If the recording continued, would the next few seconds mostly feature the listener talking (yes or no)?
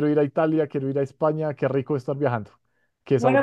yes